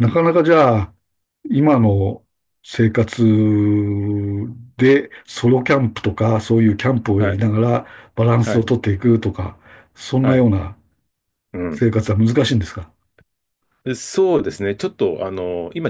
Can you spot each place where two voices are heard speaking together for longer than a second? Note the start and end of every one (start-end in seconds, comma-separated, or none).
none